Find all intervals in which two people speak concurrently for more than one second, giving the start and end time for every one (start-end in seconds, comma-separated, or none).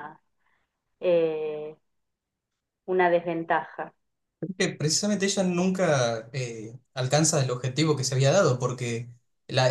none